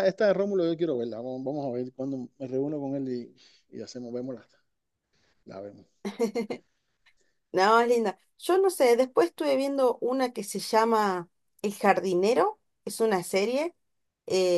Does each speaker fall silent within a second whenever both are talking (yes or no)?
yes